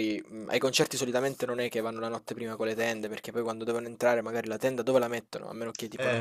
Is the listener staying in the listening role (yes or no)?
yes